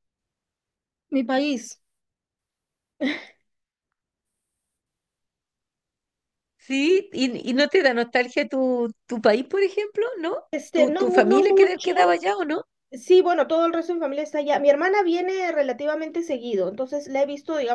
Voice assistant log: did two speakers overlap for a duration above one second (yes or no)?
yes